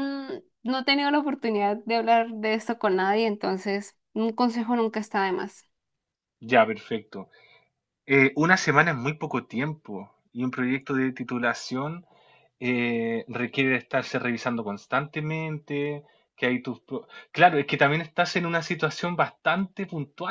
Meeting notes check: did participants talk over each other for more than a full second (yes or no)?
no